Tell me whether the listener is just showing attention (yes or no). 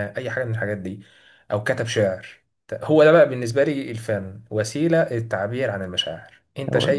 yes